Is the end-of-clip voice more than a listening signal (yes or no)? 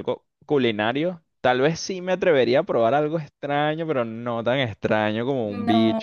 yes